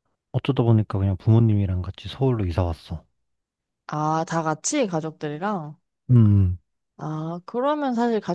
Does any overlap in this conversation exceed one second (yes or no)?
no